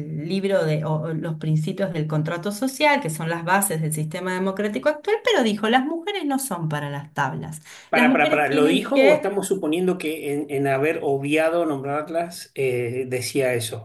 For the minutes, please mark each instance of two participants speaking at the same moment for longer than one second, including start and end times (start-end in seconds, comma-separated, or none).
7.9-9.3